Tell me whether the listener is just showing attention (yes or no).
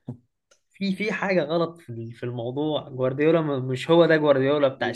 yes